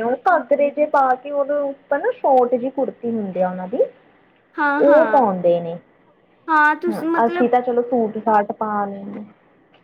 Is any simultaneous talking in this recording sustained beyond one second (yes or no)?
no